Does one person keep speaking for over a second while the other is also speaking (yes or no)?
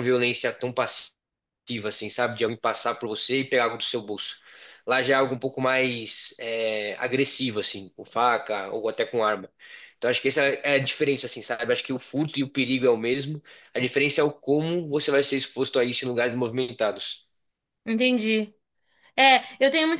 no